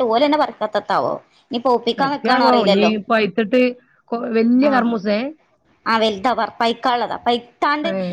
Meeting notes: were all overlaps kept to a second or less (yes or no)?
yes